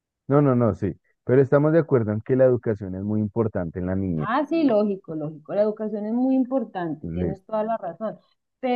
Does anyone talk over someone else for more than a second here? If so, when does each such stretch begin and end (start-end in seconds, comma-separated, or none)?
none